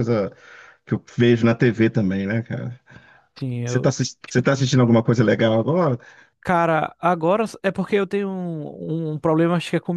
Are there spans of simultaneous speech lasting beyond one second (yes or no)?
no